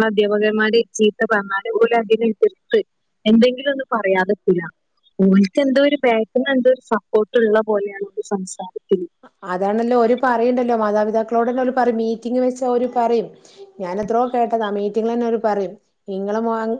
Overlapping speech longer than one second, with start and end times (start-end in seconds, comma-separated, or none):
none